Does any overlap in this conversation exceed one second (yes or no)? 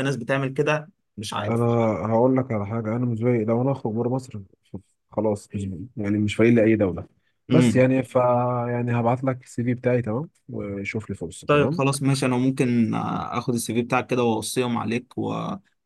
no